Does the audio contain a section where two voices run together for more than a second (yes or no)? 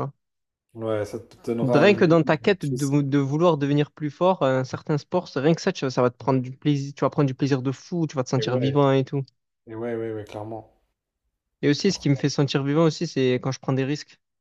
yes